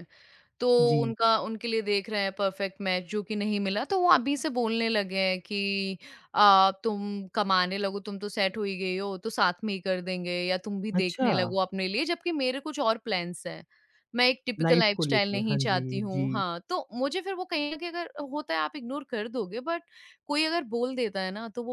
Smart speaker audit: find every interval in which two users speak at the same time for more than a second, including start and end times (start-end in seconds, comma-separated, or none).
14.6-16.4